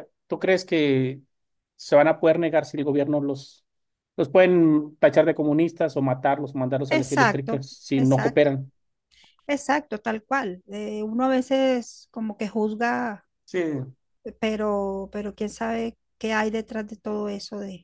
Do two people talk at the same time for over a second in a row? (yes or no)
yes